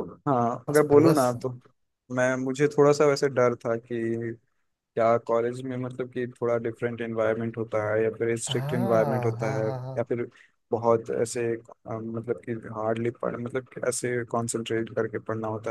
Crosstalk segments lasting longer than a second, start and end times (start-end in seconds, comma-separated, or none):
8.5-10.0